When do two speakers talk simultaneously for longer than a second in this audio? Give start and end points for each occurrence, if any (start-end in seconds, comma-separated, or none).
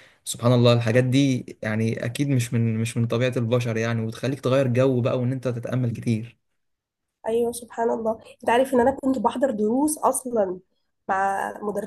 none